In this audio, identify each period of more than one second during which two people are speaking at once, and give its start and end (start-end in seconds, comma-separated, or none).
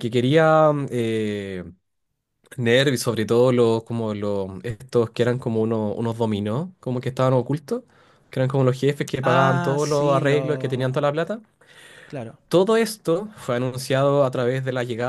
9.2-11.0